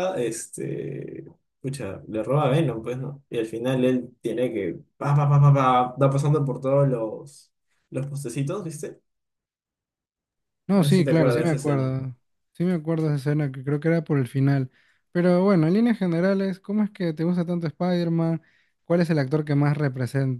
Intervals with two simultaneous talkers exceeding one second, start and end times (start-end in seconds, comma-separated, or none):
10.8-11.9